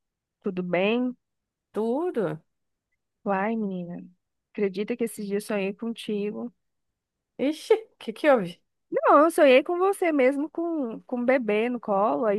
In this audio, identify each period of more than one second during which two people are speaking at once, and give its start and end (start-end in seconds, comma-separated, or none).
none